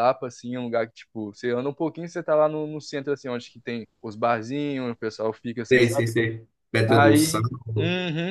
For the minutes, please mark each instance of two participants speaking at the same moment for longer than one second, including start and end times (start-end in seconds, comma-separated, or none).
none